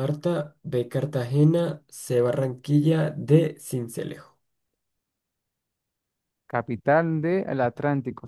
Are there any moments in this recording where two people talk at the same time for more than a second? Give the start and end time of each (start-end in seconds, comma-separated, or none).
none